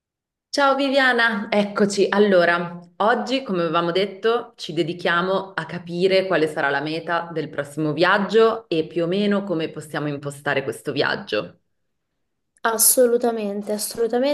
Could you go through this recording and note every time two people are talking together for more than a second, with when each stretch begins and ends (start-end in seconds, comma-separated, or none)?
none